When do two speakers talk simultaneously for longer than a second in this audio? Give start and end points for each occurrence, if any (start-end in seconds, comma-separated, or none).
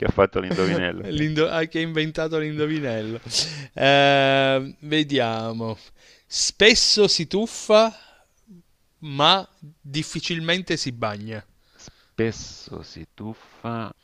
none